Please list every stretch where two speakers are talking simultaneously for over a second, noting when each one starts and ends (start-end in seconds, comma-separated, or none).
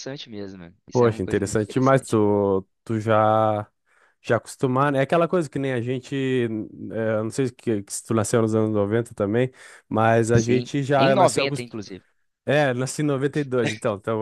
0.9-2.2, 10.3-11.7